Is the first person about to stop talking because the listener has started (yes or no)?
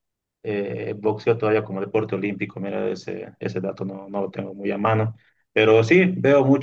no